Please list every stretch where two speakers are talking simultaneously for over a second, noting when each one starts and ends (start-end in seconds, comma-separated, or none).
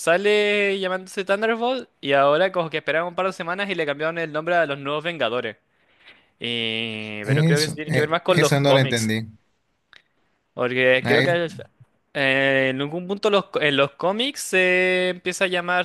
7.2-9.1